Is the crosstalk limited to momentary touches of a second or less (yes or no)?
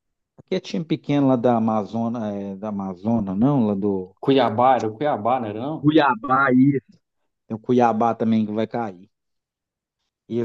yes